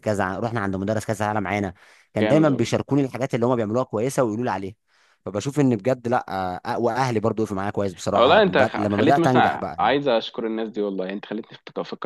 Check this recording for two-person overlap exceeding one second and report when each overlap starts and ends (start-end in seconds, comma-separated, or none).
8.1-10.0